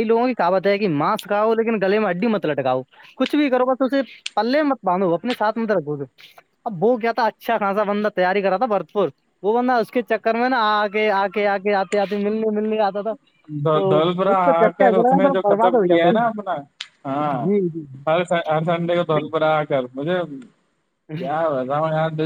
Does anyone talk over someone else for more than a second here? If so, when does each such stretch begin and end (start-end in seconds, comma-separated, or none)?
13.9-16.2